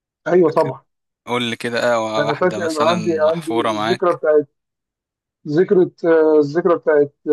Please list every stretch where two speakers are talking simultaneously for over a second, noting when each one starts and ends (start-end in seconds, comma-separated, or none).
2.2-4.2